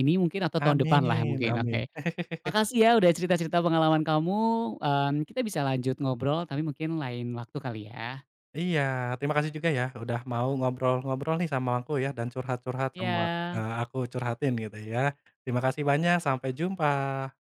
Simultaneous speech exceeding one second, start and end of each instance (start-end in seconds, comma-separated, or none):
0.6-1.8